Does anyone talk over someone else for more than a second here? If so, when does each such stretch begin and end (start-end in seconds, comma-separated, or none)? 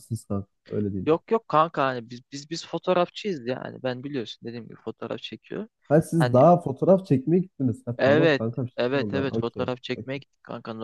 8.0-10.2